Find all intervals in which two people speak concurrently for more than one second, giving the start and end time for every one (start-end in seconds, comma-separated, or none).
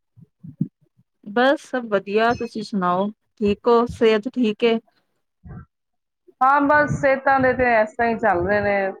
none